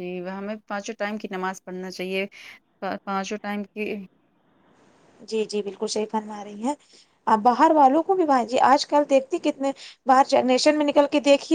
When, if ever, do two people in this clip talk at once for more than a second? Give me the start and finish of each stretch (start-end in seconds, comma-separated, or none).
none